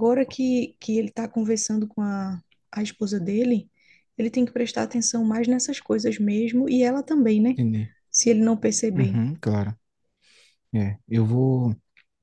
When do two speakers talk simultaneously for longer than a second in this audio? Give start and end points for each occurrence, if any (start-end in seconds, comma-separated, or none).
none